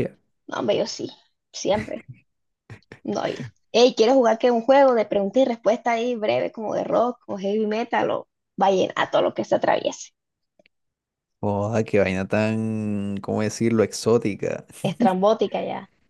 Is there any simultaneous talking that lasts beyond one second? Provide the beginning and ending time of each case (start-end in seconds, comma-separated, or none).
none